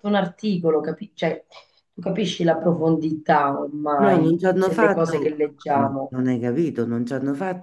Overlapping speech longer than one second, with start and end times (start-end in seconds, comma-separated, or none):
4.0-6.1